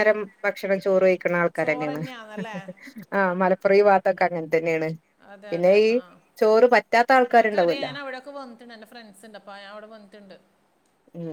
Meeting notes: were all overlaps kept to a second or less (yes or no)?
yes